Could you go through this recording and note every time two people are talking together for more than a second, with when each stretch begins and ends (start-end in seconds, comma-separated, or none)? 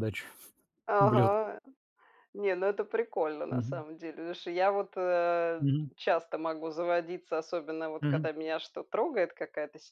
none